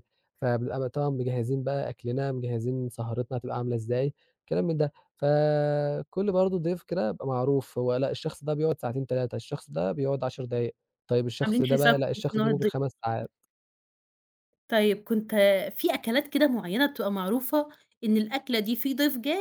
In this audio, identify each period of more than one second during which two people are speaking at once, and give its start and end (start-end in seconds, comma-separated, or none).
11.4-12.7